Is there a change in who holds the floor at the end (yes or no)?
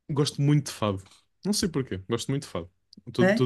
yes